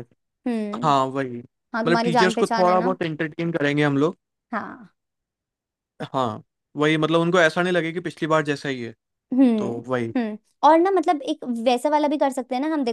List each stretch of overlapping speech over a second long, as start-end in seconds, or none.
1.7-3.0